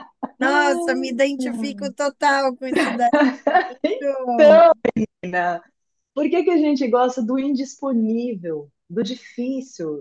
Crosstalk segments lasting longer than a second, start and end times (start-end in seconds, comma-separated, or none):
none